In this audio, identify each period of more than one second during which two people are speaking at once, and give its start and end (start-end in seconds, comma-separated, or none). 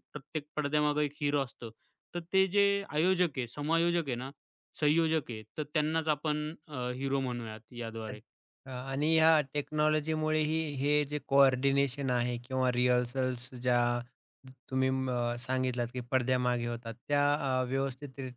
none